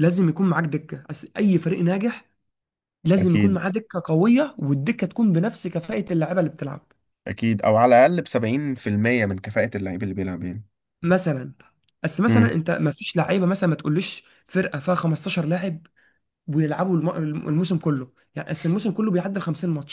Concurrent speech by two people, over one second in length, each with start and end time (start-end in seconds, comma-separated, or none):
none